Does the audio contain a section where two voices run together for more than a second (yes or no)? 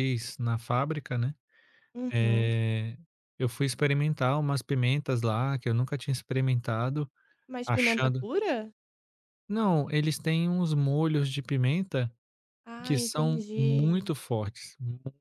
yes